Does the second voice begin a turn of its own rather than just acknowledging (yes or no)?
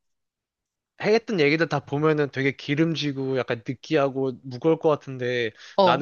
no